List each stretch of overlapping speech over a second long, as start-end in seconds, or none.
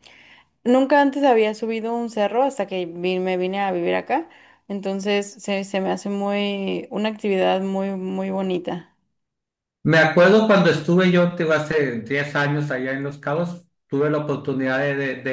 none